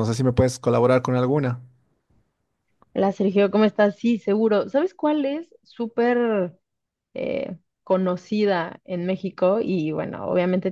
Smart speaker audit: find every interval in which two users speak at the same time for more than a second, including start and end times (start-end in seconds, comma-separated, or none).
none